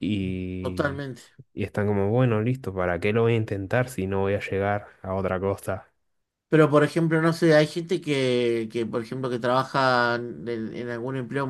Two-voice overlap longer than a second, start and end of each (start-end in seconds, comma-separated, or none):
none